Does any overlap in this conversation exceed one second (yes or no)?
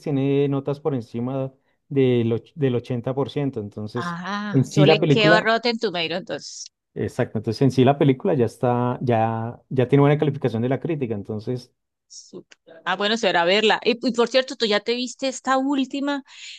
yes